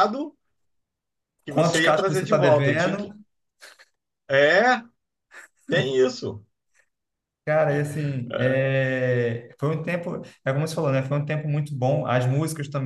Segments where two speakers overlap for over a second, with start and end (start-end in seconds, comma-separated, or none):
1.5-3.1